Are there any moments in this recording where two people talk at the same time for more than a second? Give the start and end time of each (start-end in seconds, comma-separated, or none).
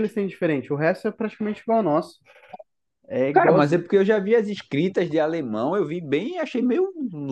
none